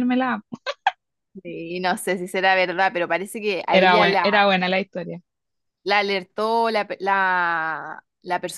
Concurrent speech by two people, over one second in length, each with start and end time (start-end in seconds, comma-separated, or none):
none